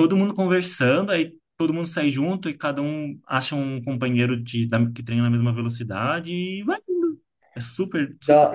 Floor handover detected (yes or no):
yes